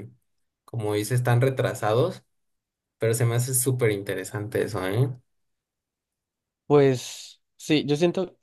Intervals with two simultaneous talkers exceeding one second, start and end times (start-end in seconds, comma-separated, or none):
none